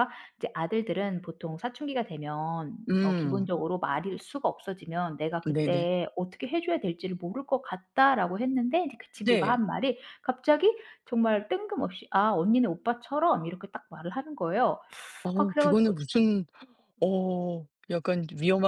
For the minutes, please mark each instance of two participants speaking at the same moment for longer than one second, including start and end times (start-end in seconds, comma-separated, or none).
none